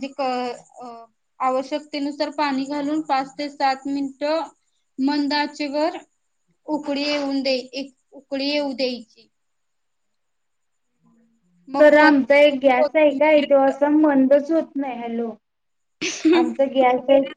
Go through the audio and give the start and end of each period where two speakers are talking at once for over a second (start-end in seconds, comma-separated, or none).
11.8-13.4